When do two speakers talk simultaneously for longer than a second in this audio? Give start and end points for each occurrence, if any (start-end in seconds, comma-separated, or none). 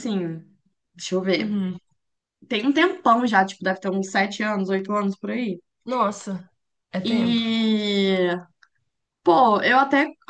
none